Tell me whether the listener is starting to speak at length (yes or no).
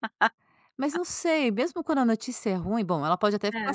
no